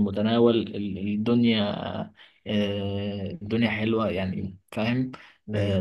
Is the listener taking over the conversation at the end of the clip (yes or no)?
no